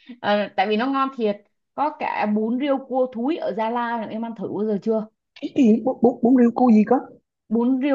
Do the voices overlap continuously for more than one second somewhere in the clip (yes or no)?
no